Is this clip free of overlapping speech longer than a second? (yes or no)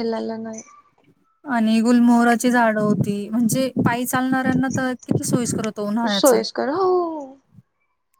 yes